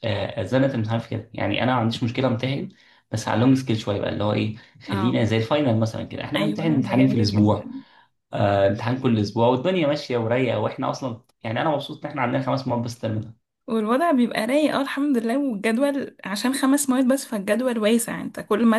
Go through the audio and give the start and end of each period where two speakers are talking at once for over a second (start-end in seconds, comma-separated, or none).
6.4-7.7